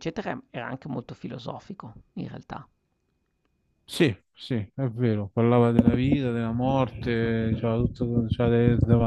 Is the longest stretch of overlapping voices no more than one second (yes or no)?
yes